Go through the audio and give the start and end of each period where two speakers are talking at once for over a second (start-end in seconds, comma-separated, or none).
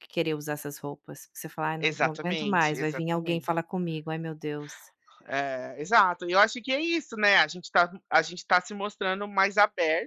1.8-3.5